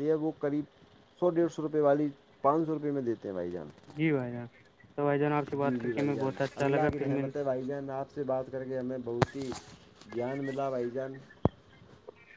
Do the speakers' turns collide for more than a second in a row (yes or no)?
yes